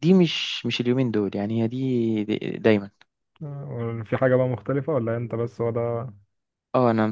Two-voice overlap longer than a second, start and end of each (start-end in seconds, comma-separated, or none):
none